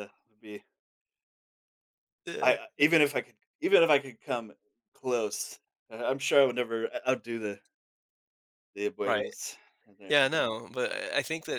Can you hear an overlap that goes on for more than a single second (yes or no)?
no